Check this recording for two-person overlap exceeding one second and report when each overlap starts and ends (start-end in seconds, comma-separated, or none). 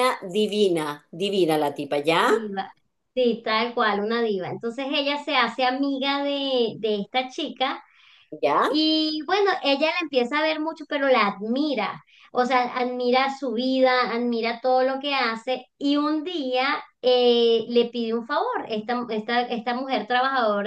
none